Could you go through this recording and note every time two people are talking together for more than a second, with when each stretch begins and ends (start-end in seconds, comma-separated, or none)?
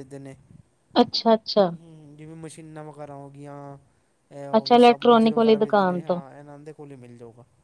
4.6-6.2